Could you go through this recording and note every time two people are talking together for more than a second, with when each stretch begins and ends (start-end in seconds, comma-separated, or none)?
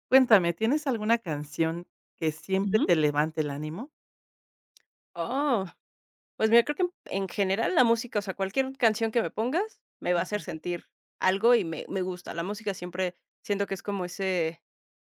none